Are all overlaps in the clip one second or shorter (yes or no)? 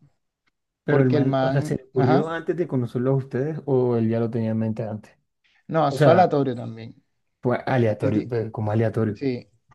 no